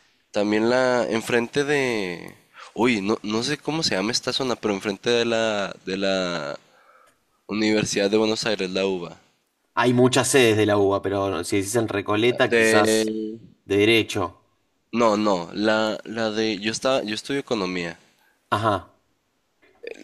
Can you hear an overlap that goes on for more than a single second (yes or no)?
no